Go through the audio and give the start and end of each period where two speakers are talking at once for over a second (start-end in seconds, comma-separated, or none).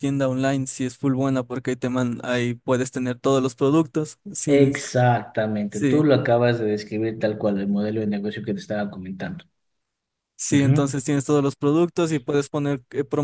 none